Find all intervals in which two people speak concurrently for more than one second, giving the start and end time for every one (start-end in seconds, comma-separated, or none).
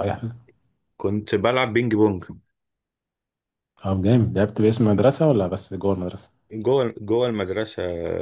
none